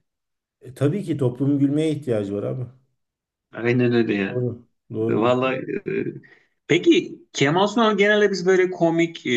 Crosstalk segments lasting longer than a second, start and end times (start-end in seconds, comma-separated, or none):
none